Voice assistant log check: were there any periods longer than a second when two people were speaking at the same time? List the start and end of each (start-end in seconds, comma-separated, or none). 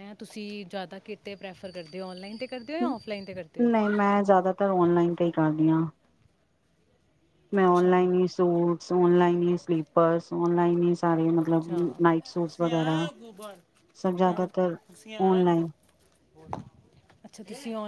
11.4-13.1